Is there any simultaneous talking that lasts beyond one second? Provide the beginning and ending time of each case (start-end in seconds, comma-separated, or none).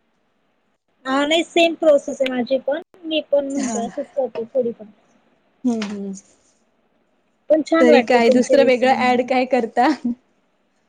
7.8-9.3